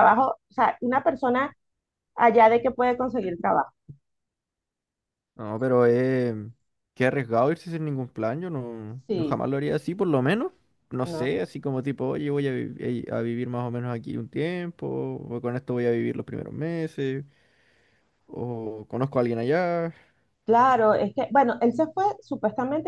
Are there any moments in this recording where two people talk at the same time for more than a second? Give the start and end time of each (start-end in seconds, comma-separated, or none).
none